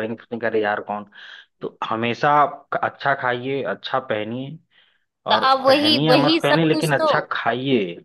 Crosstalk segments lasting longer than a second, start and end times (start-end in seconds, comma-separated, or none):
5.3-7.1